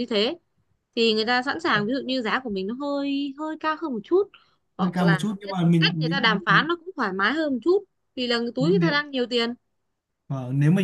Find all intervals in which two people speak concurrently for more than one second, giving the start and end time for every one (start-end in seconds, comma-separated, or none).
4.8-6.4